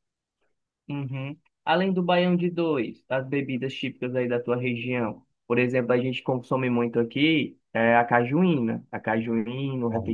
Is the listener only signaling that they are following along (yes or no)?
yes